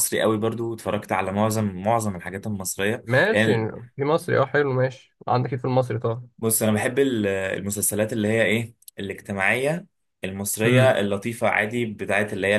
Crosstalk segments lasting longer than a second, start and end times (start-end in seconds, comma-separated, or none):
none